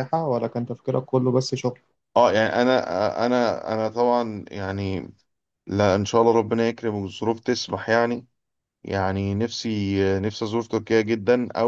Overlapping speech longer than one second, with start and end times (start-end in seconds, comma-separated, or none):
none